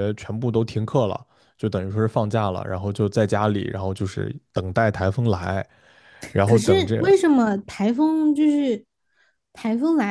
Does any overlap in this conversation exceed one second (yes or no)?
no